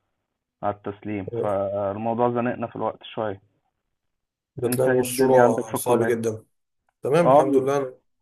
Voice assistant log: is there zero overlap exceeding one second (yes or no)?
no